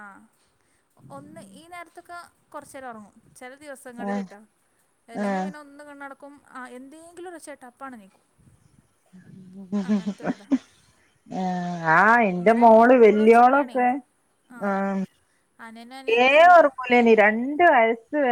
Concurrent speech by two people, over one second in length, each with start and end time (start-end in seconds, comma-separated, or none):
12.4-13.8